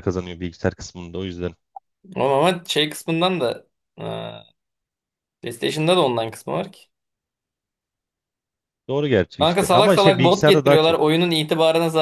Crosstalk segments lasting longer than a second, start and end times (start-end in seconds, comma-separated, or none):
9.4-11.0